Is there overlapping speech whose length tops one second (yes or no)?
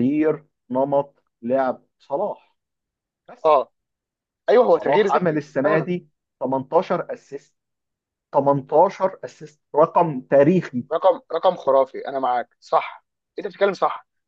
yes